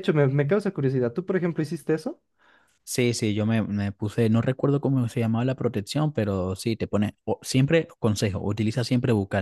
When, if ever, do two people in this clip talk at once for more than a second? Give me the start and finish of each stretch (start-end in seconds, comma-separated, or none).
none